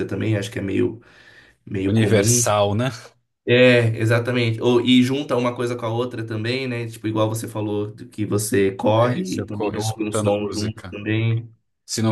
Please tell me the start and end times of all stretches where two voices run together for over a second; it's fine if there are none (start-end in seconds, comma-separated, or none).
9.0-11.0